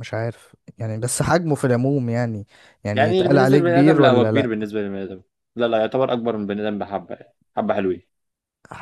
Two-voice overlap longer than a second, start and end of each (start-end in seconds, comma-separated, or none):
2.9-4.5